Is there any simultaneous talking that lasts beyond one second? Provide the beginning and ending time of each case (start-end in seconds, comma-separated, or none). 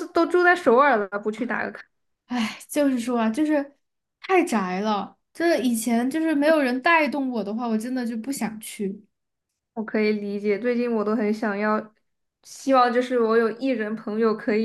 none